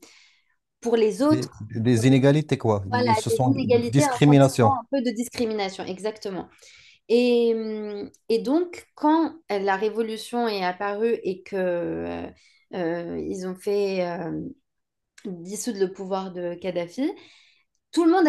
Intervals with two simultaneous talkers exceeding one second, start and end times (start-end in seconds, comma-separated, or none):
2.9-4.8